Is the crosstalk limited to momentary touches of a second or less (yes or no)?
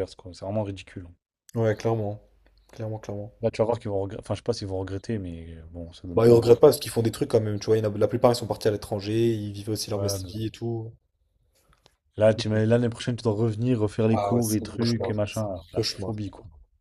no